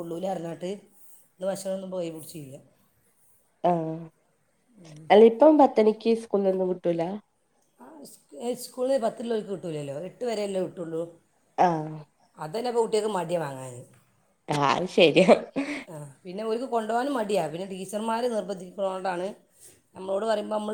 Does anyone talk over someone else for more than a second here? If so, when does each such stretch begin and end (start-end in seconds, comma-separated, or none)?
none